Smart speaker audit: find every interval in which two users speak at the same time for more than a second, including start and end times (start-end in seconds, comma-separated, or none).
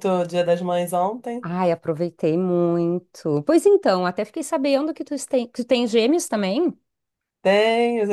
none